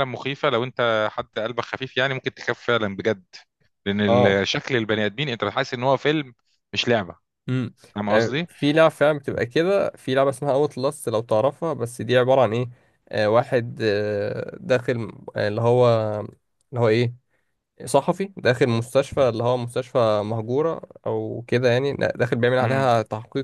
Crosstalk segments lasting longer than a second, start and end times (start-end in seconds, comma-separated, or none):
none